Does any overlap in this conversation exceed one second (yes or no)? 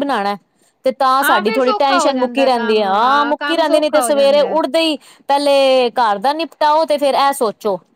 yes